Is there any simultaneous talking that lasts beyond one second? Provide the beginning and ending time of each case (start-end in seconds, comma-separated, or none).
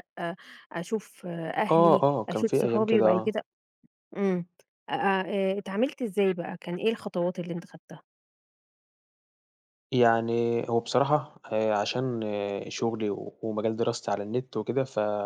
1.7-3.3